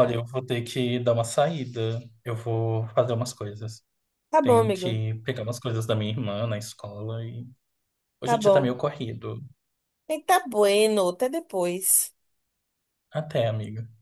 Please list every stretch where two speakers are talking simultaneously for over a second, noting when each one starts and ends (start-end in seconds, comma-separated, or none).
none